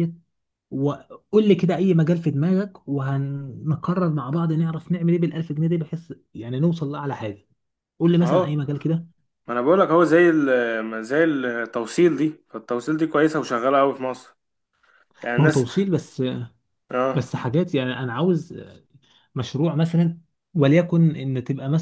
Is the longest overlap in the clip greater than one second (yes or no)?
no